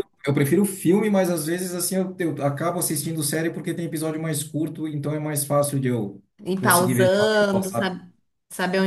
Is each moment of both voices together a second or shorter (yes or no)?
no